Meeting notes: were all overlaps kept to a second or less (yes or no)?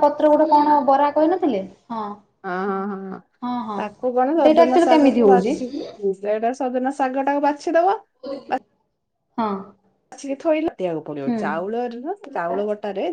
no